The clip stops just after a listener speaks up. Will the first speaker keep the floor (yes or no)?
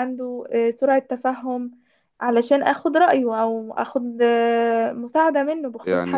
no